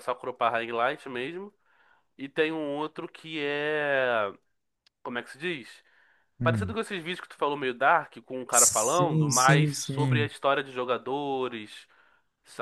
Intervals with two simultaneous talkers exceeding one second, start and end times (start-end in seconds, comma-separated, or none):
8.5-10.3